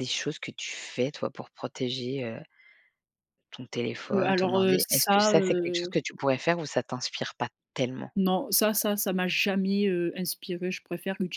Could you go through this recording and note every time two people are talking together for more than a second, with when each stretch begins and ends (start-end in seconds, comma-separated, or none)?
4.1-6.0